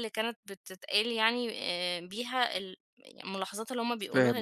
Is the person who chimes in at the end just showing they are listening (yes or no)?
no